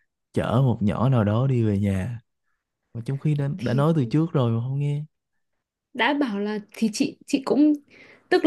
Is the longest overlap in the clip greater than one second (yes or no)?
no